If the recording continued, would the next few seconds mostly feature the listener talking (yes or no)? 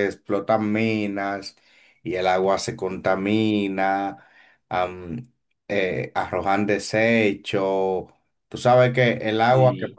no